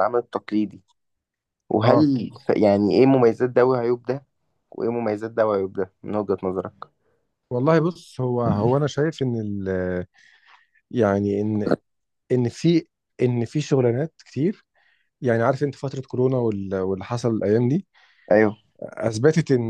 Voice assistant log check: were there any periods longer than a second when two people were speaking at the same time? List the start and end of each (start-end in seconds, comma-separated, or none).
none